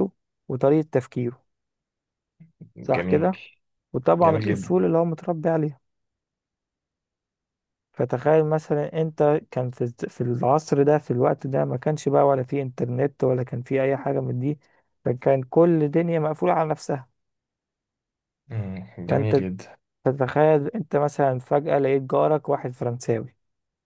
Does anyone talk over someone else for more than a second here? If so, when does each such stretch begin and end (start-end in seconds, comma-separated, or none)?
none